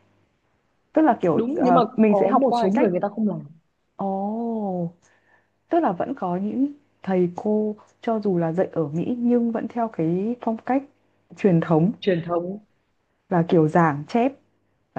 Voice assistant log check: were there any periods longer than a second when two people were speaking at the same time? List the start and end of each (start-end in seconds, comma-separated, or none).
1.3-2.9